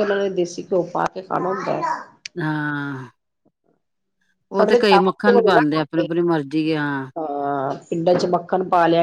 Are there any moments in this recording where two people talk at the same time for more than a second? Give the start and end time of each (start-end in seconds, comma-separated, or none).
4.6-6.1